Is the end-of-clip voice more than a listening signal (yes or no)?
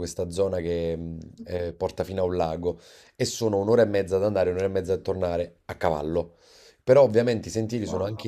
no